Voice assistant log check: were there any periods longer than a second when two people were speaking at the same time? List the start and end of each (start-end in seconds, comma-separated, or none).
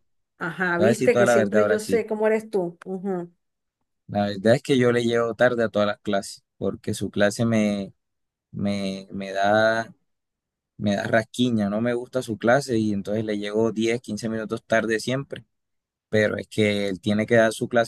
0.8-2.0